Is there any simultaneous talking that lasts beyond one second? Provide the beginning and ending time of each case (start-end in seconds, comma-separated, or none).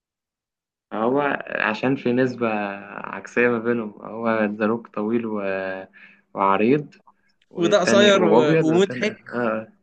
7.5-9.1